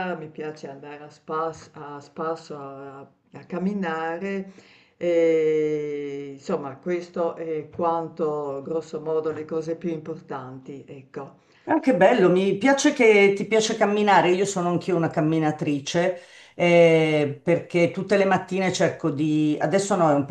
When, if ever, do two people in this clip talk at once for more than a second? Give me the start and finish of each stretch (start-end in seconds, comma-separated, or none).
none